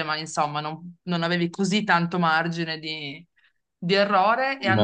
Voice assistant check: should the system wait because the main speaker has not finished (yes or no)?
yes